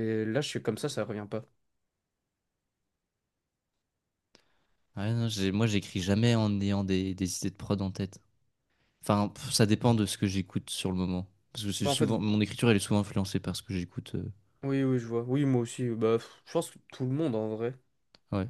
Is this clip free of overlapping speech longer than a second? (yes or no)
yes